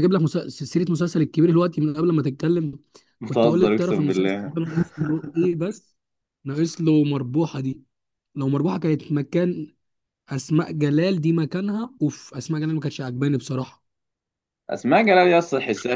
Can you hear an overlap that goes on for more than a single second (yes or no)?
yes